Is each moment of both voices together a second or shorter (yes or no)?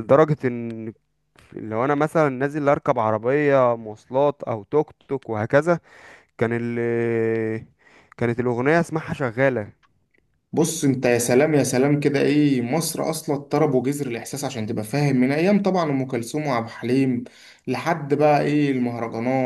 yes